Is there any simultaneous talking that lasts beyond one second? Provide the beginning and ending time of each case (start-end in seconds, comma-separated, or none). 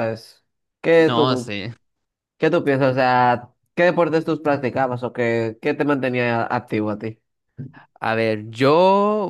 none